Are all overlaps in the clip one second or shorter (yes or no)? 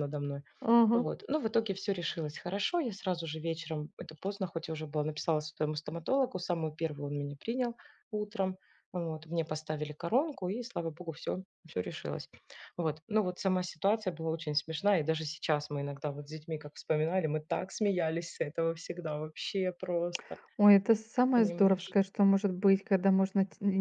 yes